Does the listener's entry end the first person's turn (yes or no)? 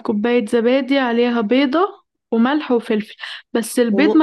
no